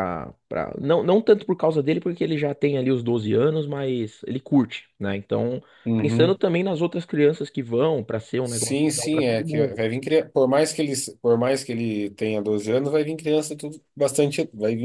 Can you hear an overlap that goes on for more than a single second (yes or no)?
yes